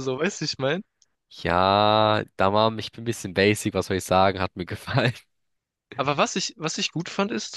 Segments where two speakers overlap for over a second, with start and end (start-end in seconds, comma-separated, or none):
none